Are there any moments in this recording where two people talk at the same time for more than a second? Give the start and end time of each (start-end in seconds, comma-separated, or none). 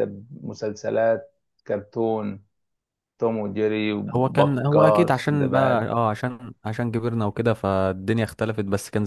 4.2-5.9